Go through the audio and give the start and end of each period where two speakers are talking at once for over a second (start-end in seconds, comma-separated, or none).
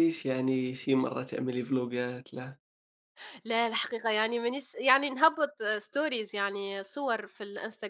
none